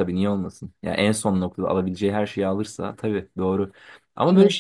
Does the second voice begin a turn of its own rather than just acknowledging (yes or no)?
no